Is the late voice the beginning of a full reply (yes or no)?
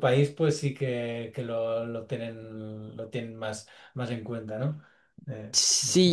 yes